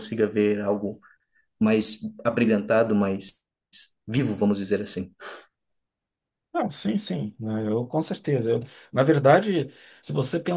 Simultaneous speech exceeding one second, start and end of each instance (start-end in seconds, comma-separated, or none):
none